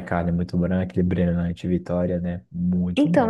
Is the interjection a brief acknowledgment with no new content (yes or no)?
no